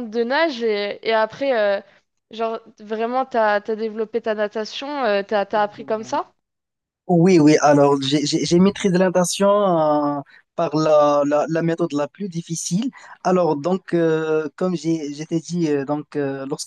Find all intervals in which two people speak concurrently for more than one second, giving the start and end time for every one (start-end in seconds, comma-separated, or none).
none